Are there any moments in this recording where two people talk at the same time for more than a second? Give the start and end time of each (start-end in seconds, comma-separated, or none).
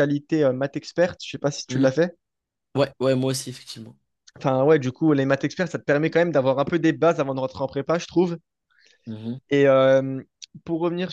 none